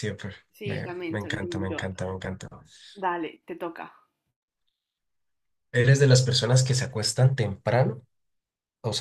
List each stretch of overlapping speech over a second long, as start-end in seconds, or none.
0.5-1.9